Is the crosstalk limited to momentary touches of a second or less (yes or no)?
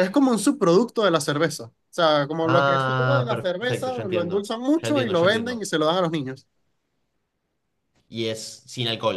no